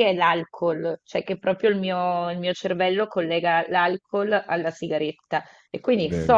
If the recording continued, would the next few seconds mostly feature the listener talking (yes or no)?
no